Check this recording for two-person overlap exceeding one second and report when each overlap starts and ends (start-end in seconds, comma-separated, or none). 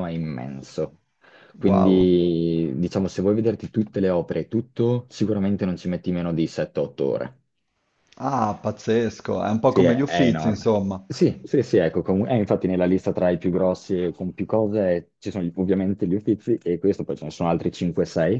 9.6-11.0